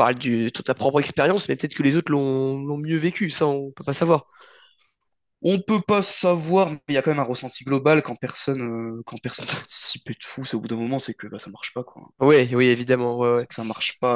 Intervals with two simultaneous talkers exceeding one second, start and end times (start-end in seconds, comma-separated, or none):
none